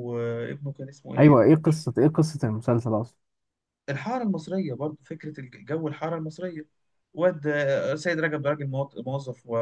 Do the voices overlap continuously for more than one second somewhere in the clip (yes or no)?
no